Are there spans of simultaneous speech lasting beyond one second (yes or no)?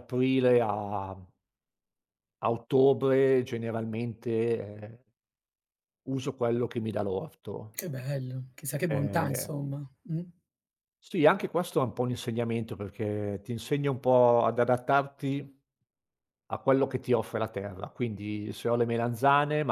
no